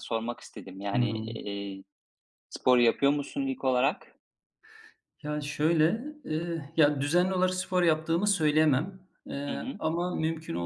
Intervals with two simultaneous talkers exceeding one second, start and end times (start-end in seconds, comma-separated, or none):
none